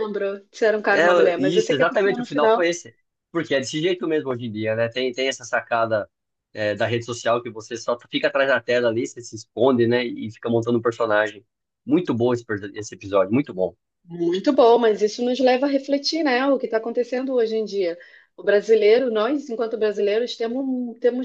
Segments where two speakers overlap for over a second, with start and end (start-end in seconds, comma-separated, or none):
0.9-2.7